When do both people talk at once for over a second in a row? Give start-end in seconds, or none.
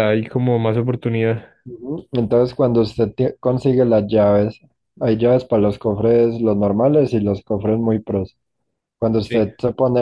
none